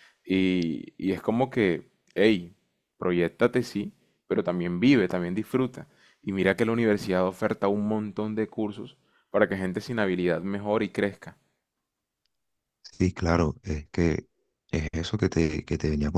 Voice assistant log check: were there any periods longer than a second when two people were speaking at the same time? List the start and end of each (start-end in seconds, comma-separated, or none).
none